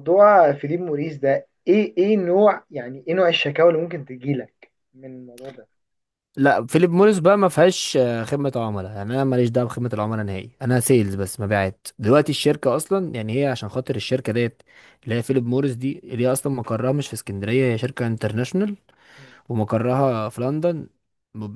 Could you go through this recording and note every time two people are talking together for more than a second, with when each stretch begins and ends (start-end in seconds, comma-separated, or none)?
none